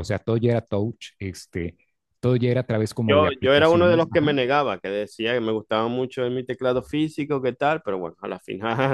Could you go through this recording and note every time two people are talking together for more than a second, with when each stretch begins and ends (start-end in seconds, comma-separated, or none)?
3.1-4.4